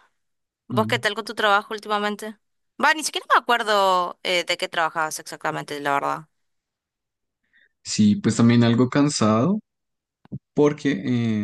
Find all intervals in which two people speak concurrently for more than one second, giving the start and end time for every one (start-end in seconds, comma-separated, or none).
none